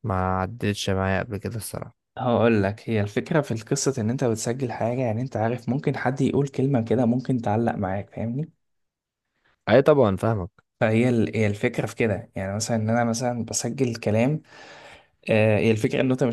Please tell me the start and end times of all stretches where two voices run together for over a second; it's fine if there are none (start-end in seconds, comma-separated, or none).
none